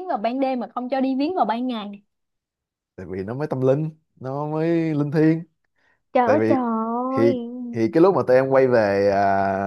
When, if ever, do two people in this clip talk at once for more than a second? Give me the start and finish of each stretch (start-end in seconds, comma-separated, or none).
none